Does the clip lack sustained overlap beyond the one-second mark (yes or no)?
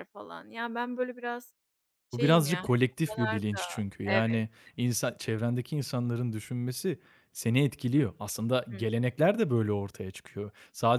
no